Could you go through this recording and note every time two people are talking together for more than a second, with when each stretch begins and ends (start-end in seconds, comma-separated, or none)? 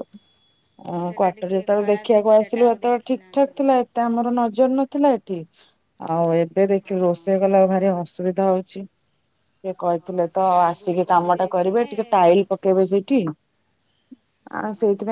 0.9-3.5, 10.0-11.9